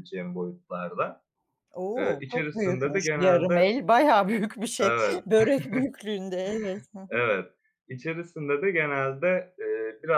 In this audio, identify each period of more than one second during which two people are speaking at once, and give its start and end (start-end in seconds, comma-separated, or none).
2.0-3.7